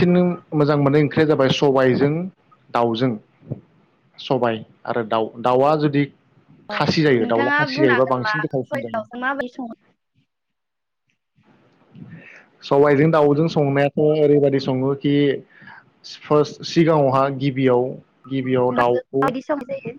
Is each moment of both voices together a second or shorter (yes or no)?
no